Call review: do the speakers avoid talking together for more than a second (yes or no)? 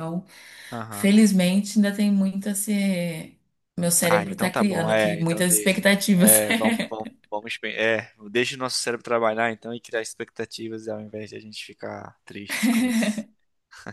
no